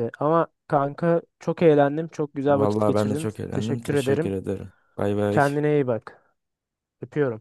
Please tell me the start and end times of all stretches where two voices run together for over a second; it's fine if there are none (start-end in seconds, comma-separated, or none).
2.5-4.3